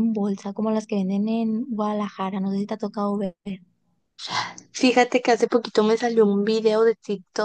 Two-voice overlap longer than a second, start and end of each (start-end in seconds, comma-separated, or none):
none